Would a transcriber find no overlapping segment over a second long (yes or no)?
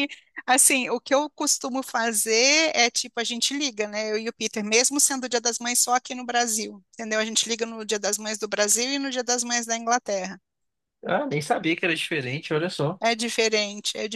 yes